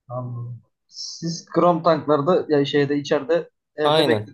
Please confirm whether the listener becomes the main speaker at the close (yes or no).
yes